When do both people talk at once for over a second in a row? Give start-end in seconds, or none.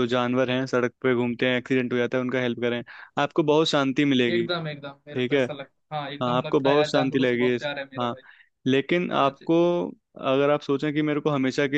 6.2-8.1